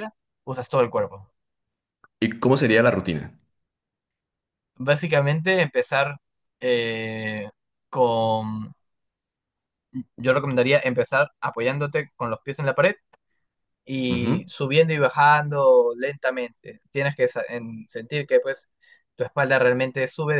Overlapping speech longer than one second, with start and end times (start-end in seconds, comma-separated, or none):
none